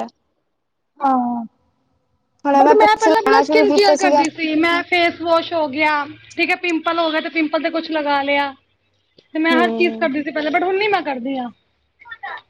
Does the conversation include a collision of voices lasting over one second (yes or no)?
yes